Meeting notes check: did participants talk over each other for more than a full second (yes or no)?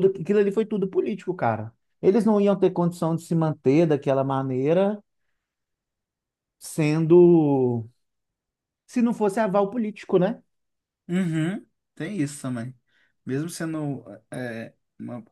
no